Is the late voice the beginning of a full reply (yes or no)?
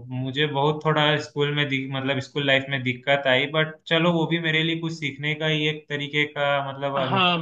yes